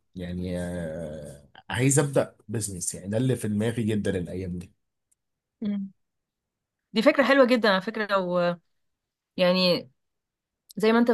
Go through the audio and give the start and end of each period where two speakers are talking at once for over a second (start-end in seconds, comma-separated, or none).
none